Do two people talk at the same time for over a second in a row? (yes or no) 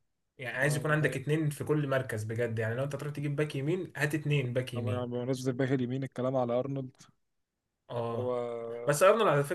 no